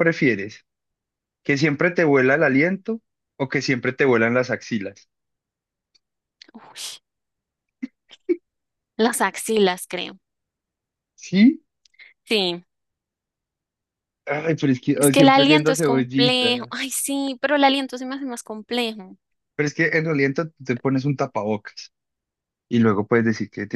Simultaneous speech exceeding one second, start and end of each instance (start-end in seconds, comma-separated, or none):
14.9-16.7